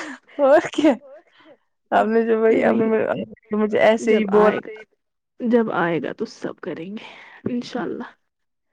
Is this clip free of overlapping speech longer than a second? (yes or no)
no